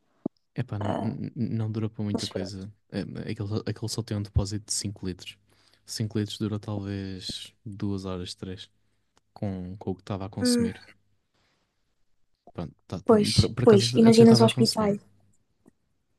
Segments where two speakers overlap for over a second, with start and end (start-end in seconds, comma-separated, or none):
13.1-14.9